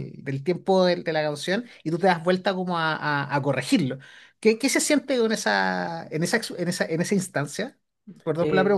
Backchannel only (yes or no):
no